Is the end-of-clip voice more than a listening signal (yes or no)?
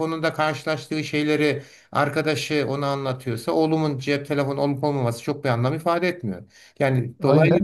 yes